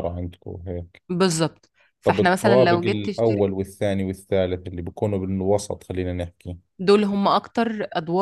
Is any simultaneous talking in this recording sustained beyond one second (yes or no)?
yes